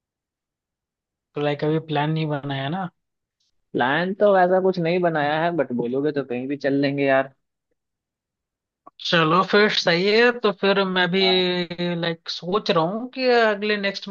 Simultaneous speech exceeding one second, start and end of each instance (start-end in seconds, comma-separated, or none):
none